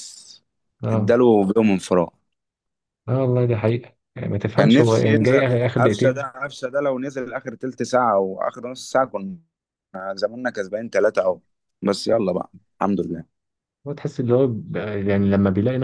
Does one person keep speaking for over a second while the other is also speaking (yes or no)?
yes